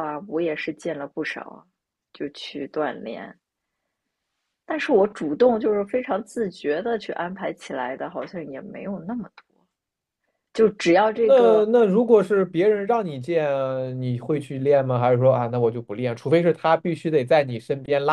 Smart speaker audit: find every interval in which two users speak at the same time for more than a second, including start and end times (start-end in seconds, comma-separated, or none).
none